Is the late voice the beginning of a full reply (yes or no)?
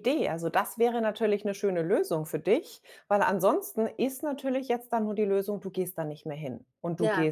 no